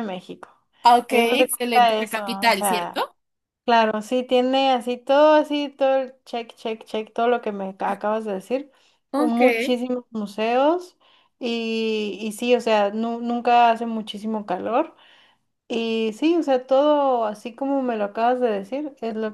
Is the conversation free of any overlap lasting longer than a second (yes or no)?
no